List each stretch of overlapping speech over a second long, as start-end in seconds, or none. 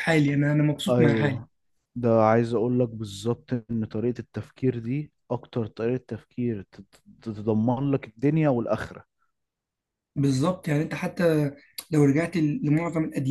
none